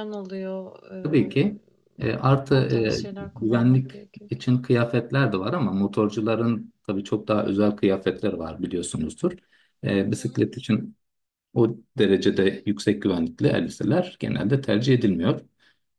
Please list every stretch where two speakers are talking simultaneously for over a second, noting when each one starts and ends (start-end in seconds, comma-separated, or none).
2.5-3.9